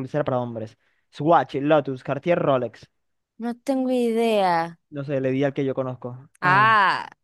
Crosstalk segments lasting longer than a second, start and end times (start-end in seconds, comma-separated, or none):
none